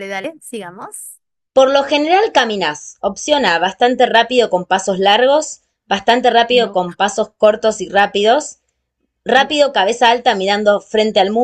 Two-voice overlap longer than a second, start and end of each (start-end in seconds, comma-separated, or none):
none